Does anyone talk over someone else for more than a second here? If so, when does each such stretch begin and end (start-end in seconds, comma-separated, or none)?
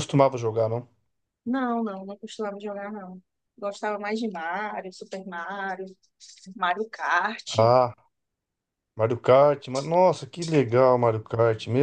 none